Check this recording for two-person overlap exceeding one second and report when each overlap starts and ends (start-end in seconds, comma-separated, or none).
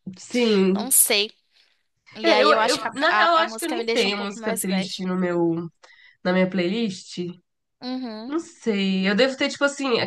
2.2-5.0